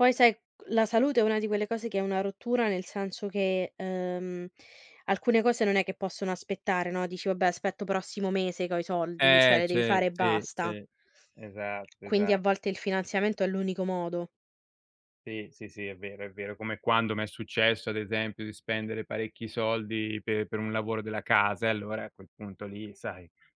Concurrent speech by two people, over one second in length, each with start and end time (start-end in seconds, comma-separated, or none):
9.2-10.8